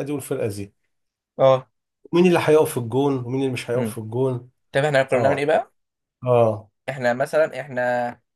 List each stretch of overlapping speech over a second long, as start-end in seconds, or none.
none